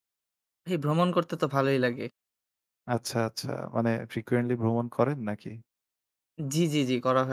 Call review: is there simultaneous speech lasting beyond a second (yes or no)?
no